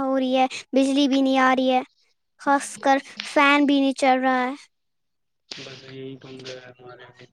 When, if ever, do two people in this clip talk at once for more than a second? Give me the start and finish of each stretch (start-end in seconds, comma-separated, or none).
none